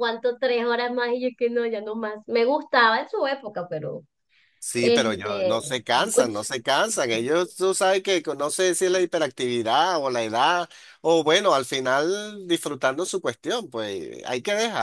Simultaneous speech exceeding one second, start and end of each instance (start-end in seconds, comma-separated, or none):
4.8-6.4